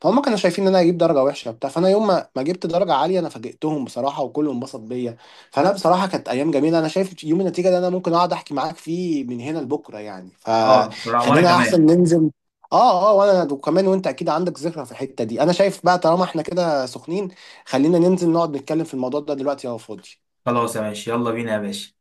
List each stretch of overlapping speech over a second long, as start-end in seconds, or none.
10.6-11.9